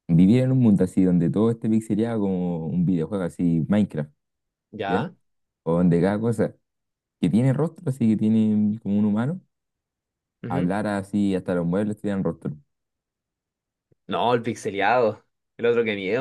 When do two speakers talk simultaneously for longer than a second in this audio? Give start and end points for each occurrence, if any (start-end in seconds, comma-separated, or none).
none